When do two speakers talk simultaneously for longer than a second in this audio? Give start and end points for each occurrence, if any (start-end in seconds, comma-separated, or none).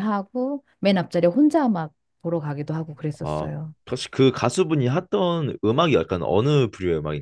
none